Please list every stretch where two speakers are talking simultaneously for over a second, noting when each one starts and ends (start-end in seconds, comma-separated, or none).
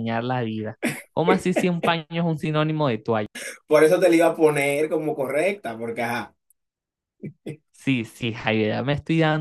none